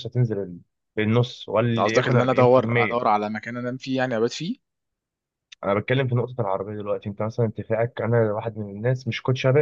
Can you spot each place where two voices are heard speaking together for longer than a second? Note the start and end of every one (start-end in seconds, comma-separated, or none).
1.7-3.1